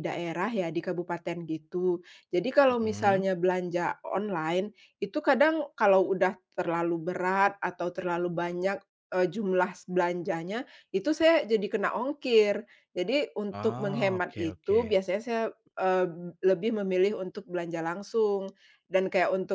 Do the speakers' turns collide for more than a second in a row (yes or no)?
yes